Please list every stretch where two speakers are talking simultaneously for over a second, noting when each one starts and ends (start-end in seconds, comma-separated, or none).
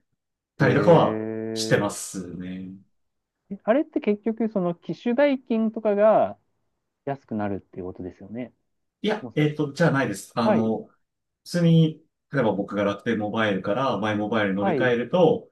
0.6-2.0